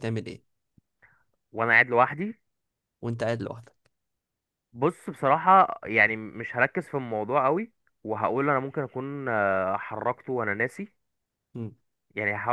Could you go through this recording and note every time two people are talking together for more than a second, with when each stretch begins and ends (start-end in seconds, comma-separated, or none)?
none